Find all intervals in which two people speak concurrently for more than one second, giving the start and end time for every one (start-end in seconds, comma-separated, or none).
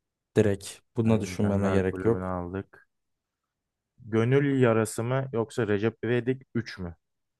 1.0-2.3